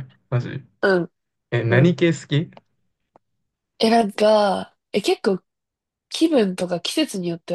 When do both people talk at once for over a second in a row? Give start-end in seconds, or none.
none